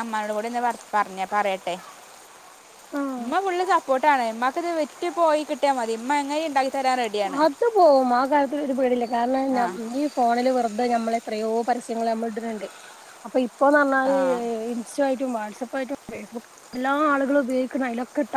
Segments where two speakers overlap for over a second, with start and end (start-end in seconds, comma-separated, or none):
none